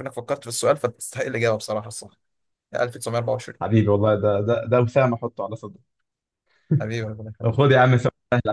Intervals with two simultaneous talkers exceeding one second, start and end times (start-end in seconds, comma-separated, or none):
none